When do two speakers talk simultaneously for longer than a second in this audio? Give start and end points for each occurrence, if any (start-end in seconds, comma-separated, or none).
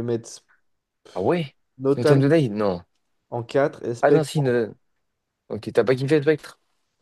none